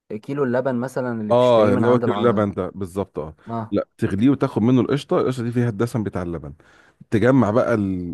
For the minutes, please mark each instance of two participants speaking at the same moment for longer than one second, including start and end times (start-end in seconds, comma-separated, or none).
1.3-2.5